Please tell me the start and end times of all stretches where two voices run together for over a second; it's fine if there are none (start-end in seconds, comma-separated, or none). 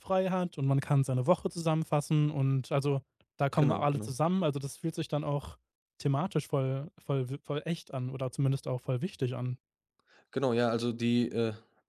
none